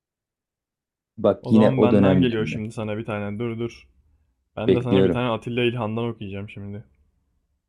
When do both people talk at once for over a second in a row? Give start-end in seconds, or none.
1.4-2.6